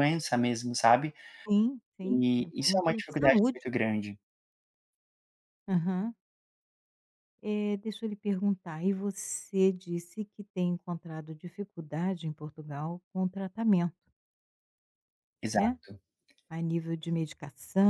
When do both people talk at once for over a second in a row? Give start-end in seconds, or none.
2.0-3.6